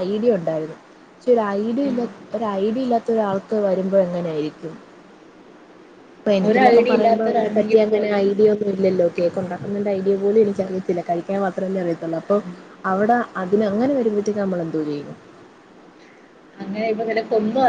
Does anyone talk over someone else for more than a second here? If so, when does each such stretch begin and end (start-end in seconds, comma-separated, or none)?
6.5-8.2